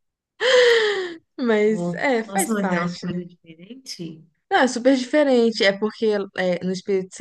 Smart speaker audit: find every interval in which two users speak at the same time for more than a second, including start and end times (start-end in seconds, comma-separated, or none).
1.6-3.1